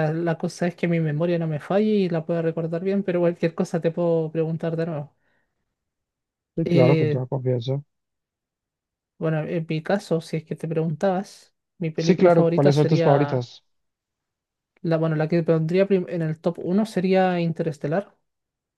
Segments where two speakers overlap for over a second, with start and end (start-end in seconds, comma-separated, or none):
12.0-13.5